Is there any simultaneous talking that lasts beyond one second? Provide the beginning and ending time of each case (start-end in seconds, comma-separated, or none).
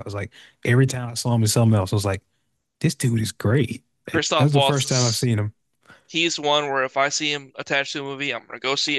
4.0-5.3